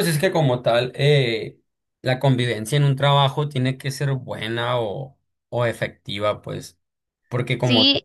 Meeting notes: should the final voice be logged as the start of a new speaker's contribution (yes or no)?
no